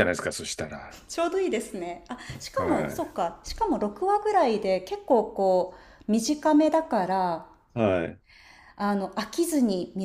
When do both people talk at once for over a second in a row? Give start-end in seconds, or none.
none